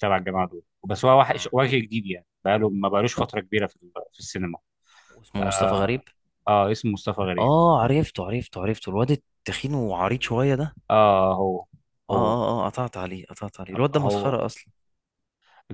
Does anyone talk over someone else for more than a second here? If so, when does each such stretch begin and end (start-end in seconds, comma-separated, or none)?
none